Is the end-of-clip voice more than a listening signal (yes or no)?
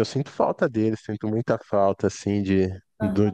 no